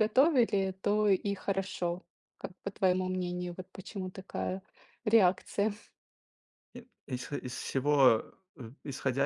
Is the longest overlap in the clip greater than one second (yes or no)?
no